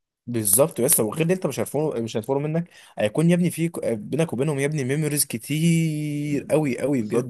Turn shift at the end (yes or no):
yes